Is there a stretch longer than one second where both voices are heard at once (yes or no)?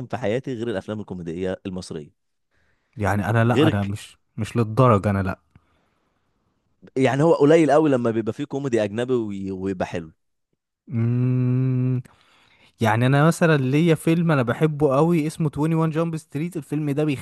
no